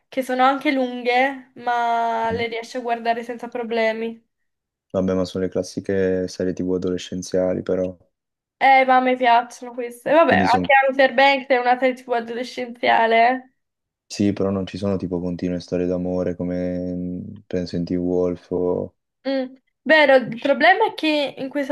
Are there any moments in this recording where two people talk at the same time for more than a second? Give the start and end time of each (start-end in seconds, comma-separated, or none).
none